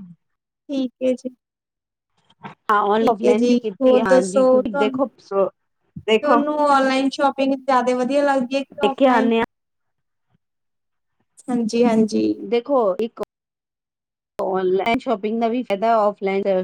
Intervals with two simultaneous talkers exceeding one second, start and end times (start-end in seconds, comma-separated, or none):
3.0-5.0